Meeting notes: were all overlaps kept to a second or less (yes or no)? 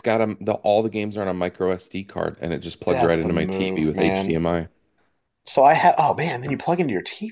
no